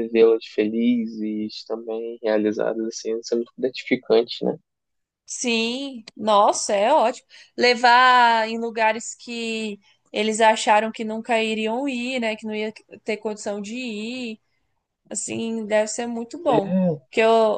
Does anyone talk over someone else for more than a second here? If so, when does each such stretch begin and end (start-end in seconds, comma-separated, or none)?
none